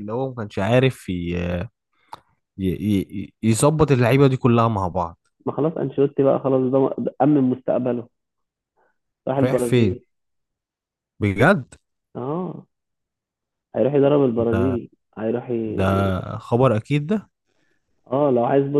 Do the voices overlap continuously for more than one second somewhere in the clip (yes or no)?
no